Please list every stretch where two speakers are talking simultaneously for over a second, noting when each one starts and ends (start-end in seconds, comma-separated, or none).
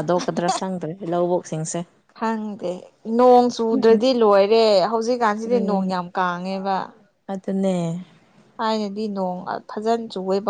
none